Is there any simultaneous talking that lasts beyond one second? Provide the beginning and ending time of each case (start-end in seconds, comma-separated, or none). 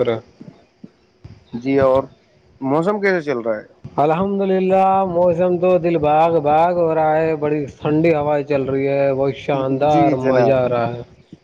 9.4-10.8